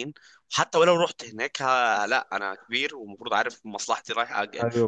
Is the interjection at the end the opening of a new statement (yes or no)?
yes